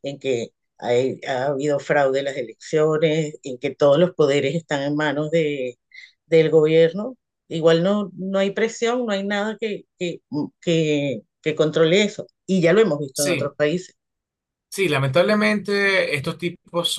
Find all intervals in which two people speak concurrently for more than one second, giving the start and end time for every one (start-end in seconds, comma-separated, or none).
none